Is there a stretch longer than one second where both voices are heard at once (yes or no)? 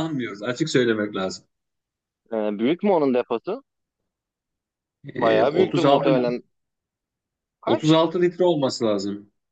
yes